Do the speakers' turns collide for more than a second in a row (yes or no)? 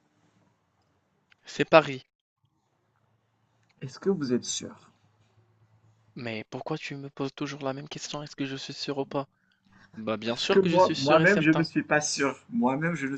yes